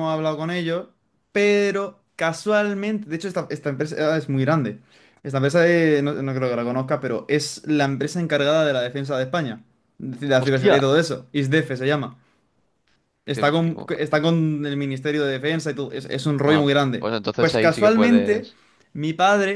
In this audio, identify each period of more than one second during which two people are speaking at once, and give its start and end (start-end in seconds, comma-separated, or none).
16.4-18.5